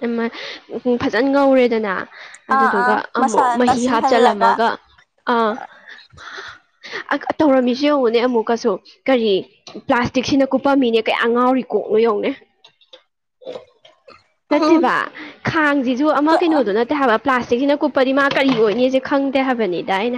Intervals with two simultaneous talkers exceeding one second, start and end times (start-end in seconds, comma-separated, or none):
2.5-4.5